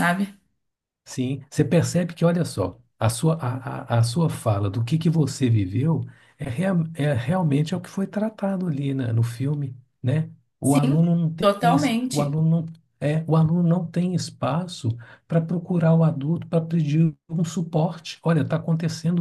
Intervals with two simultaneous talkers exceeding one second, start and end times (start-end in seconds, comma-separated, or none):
10.6-12.4